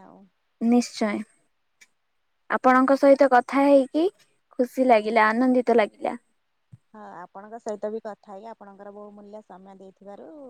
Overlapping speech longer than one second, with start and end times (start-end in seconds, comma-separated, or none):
none